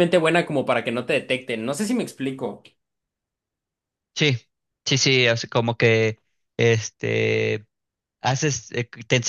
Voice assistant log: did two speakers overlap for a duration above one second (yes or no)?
no